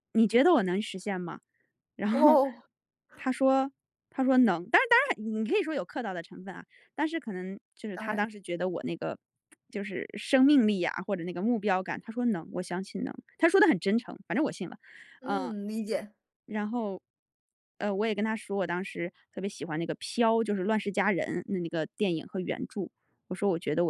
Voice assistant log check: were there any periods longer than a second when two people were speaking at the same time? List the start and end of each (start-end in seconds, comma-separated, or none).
none